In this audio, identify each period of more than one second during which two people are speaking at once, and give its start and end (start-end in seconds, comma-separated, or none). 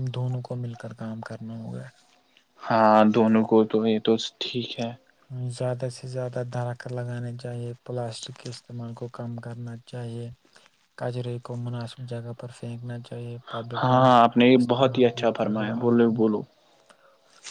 13.8-16.2